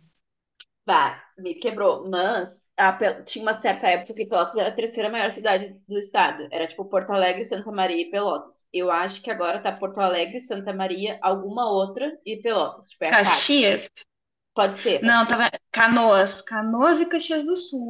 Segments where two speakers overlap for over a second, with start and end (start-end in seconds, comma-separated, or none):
none